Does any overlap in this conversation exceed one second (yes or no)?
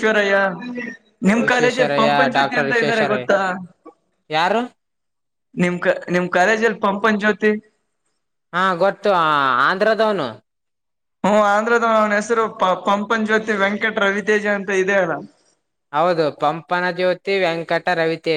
yes